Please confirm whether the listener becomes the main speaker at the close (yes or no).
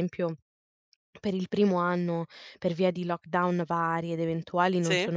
no